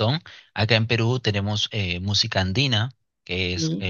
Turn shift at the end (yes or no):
no